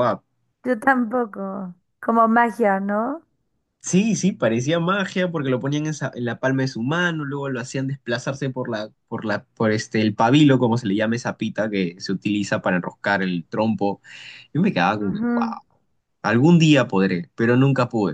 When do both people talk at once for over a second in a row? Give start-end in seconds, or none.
none